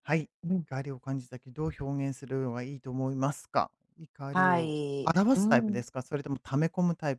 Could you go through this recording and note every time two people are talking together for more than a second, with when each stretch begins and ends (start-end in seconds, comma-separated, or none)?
4.3-5.8